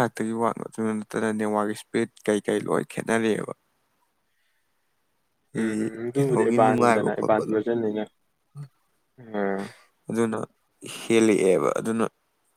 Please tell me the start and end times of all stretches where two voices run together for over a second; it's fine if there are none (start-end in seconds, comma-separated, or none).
6.2-7.5